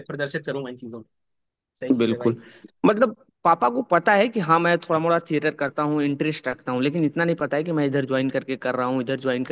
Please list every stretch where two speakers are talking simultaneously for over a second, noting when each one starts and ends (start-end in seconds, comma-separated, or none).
none